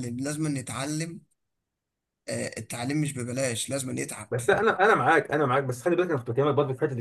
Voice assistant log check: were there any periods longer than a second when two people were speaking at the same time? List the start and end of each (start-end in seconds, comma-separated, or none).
none